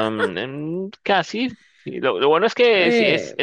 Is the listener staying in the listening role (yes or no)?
yes